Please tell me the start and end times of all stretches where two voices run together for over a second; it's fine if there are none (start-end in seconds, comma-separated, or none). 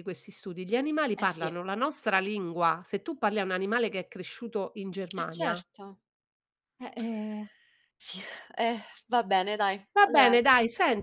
none